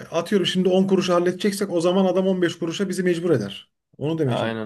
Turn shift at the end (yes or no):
yes